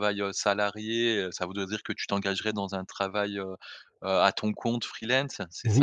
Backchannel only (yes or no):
no